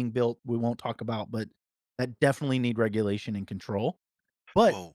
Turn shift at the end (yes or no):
no